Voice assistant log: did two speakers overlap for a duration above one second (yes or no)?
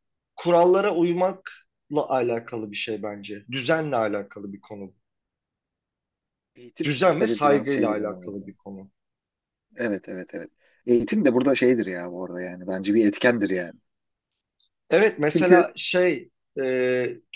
yes